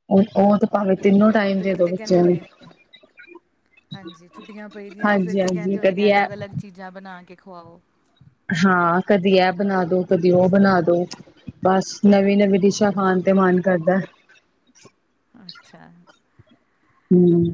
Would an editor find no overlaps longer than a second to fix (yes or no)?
no